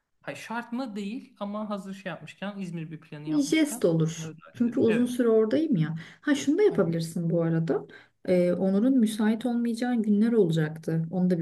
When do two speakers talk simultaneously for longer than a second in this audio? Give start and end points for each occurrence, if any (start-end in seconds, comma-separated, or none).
3.3-5.2